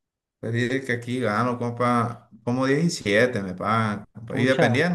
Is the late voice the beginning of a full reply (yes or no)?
no